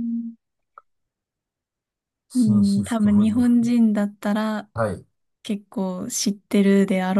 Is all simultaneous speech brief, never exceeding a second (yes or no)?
no